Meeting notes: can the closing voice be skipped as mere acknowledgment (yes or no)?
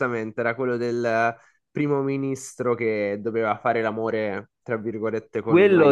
no